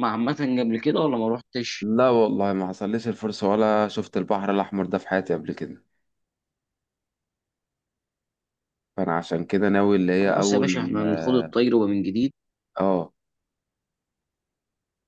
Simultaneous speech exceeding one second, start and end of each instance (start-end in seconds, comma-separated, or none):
10.2-11.6